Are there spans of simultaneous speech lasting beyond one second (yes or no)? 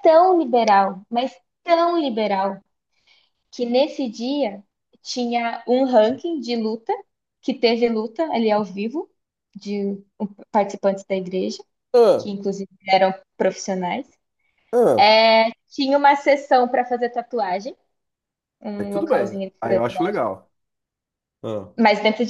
yes